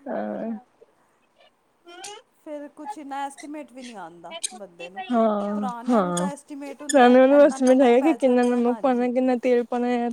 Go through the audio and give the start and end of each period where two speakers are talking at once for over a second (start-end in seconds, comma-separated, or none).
6.9-9.1